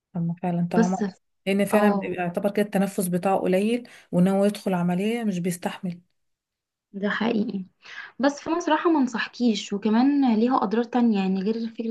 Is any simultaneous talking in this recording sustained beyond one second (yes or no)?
no